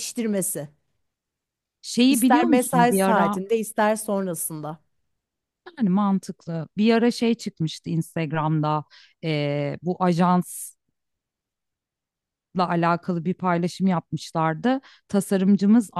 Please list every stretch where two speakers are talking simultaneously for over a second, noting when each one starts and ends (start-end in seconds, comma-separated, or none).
2.1-3.4